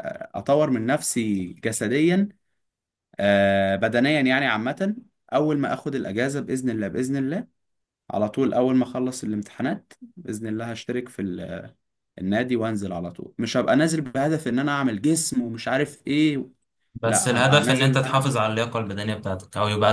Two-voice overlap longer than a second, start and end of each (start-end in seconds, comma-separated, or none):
17.1-18.3